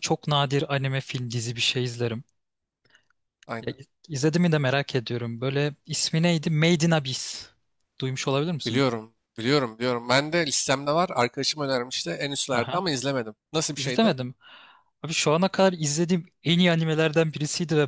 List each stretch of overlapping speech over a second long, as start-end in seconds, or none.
none